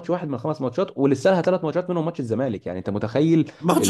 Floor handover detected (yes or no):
yes